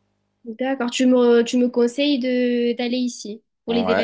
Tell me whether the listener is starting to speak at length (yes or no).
yes